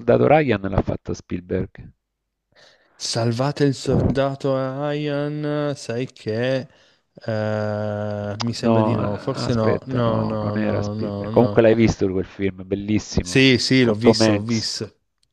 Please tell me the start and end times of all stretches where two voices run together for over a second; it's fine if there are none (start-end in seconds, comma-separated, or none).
8.6-11.6, 13.2-14.7